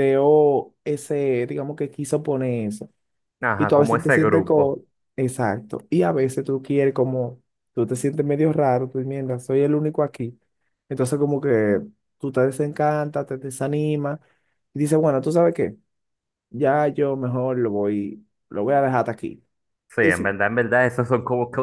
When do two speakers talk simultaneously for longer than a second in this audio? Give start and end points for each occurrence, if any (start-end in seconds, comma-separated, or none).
3.6-4.8